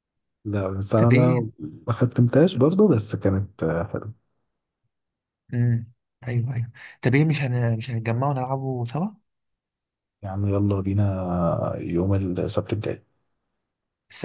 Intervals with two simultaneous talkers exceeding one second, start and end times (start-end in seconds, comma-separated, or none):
none